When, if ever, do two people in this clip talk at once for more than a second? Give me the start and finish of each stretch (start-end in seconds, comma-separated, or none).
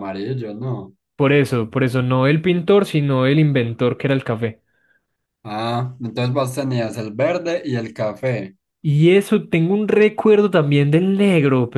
none